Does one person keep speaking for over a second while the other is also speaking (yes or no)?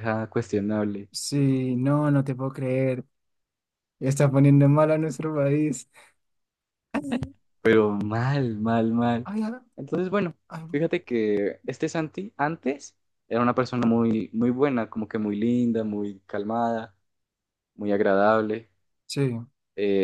no